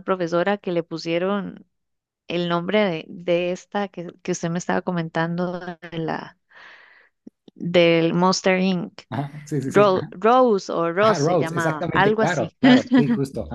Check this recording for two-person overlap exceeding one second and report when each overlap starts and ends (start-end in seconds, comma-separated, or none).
11.0-12.6